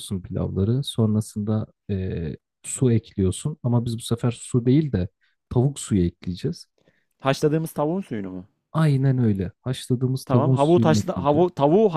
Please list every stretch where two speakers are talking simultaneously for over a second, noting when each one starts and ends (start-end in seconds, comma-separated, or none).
10.2-11.4